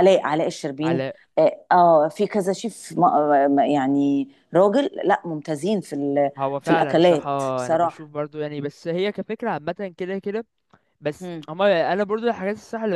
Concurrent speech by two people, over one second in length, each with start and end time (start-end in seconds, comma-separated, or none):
6.4-8.1